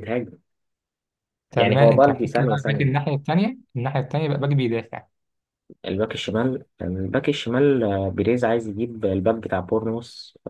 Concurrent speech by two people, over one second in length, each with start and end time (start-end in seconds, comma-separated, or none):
1.6-2.9